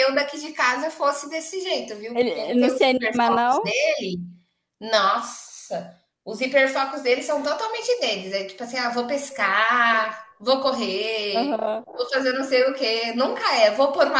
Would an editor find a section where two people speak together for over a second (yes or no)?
yes